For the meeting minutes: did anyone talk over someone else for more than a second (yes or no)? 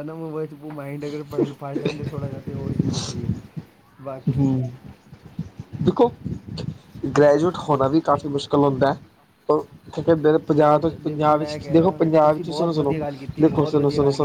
yes